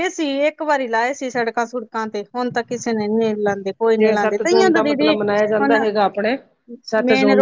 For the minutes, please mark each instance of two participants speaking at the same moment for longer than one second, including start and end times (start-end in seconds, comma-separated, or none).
4.0-5.8